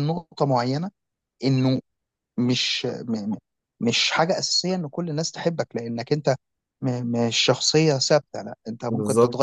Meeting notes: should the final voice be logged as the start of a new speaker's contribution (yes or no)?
no